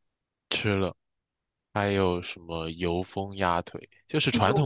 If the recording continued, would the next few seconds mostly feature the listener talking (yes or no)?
no